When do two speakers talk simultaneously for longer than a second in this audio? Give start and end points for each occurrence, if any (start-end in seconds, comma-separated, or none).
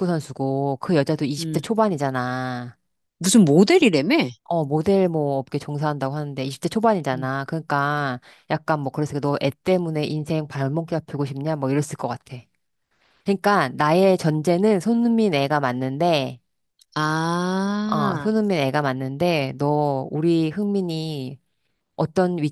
none